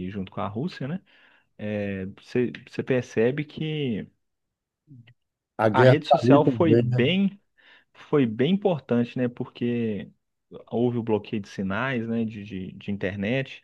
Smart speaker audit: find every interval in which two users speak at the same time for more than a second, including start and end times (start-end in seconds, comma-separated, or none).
5.7-7.1